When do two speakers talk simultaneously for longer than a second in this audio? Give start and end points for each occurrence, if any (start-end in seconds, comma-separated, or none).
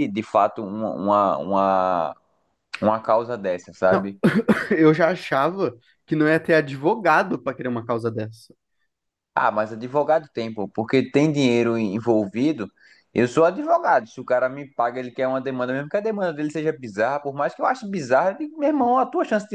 none